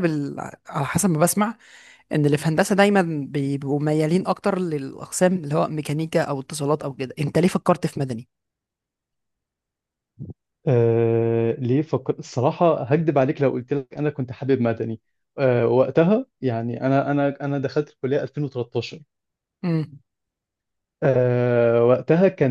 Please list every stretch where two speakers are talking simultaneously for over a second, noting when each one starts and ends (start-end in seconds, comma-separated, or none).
none